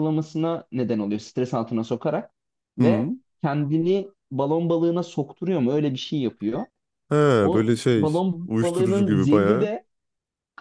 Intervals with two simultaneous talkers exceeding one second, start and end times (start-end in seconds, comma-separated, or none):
7.5-9.7